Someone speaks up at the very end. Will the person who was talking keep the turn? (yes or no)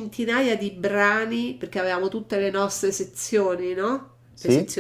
yes